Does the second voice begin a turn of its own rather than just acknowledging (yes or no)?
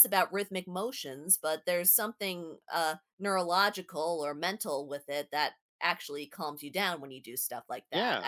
yes